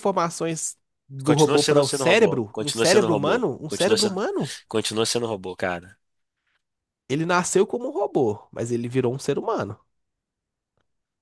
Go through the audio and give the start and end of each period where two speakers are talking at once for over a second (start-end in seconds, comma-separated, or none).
1.2-4.2